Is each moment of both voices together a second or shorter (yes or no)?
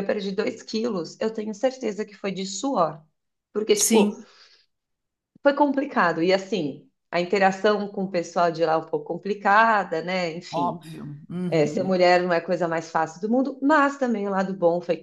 yes